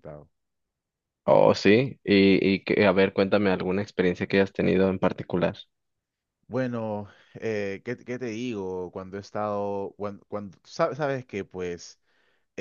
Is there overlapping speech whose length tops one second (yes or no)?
no